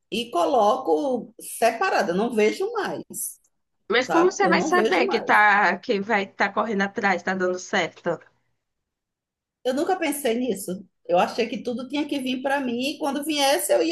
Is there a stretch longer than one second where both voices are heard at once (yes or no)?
yes